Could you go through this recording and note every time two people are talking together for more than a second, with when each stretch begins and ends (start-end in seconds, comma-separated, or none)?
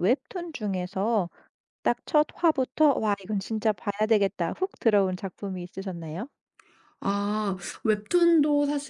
none